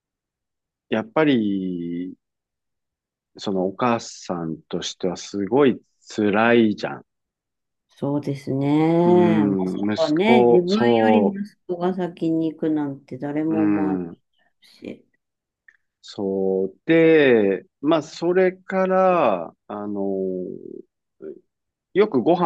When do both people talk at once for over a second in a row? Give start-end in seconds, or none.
9.1-11.4